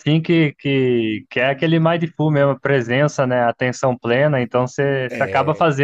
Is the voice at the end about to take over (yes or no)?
no